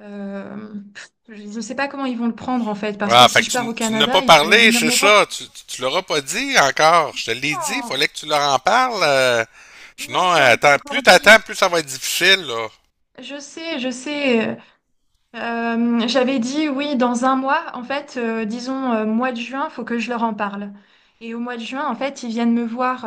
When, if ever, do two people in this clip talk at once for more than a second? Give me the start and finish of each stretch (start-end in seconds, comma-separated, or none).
3.0-5.2, 10.0-11.4